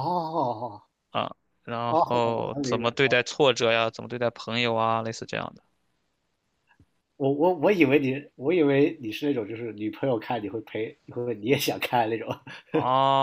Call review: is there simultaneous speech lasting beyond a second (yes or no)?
yes